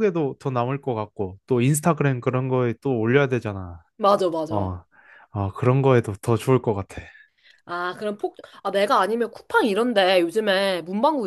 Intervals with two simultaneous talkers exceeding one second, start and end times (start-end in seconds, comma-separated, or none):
none